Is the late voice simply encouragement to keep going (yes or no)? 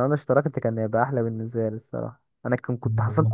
yes